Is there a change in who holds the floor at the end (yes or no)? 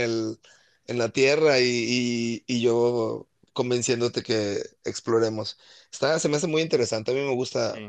yes